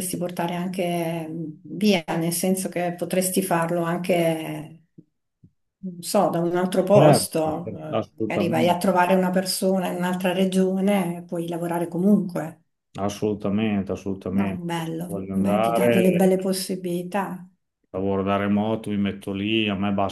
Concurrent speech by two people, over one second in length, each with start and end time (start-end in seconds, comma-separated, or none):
6.9-8.8, 14.3-16.2